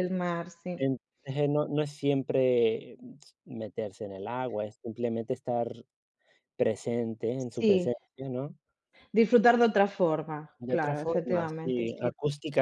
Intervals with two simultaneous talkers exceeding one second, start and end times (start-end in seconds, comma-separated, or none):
10.6-12.1